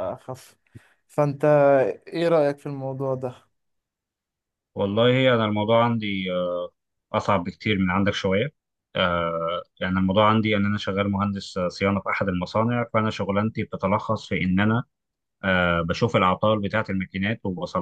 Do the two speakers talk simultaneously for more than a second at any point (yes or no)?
no